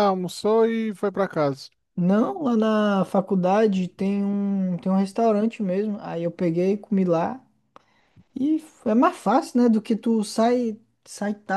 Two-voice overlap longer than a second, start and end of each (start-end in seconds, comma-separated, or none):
none